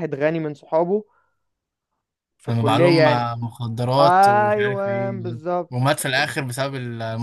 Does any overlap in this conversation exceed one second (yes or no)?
yes